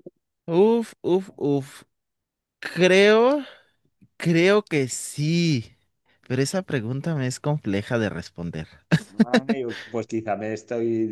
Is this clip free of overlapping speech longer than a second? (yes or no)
yes